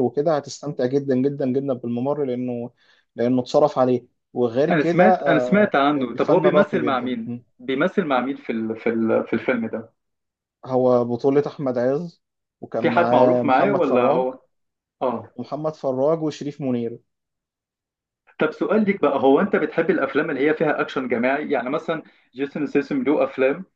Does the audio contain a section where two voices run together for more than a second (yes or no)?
yes